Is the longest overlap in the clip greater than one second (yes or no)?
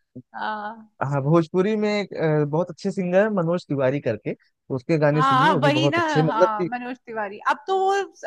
yes